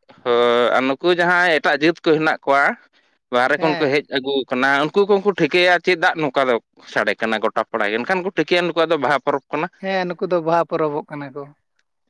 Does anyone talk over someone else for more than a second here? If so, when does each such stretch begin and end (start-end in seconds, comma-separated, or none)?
none